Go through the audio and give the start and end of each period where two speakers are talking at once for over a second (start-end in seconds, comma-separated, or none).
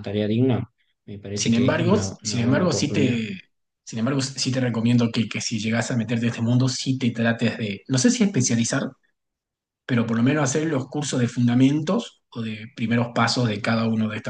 1.3-3.2